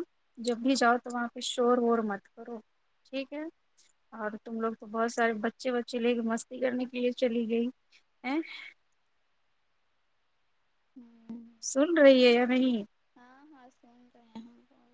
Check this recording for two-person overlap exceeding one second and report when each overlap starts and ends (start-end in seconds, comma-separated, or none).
none